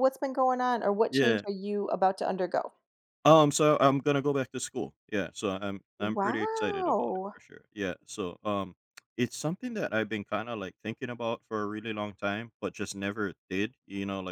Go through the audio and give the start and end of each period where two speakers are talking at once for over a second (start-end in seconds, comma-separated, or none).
6.0-7.4